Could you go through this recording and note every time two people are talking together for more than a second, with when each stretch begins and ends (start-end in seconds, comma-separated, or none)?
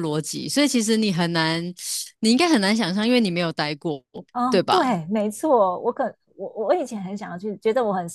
none